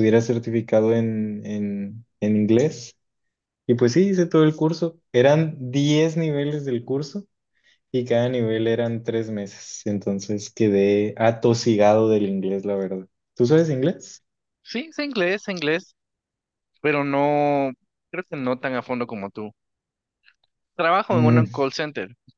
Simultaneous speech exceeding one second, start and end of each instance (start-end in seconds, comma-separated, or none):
none